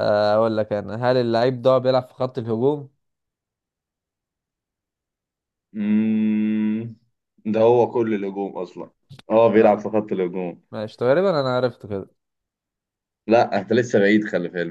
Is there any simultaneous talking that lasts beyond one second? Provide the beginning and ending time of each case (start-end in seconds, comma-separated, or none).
none